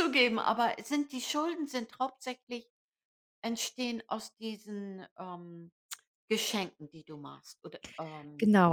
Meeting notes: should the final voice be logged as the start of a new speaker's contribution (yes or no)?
yes